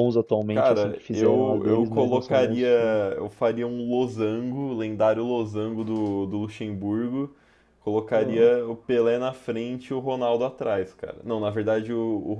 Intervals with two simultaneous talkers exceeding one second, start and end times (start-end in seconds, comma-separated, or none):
0.5-2.7